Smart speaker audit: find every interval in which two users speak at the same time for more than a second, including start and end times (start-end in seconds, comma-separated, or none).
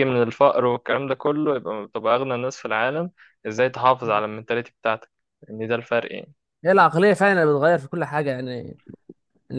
none